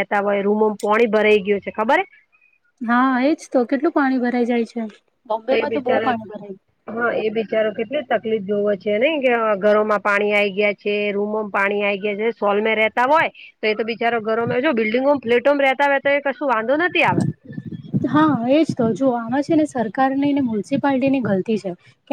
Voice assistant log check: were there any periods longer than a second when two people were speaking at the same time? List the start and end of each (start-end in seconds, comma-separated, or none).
none